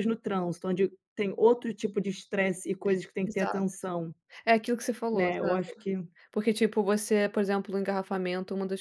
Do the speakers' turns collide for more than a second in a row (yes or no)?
no